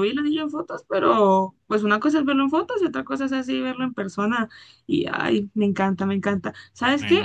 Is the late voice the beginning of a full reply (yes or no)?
no